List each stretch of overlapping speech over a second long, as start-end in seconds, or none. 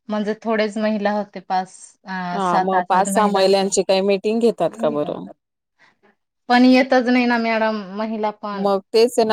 2.3-3.7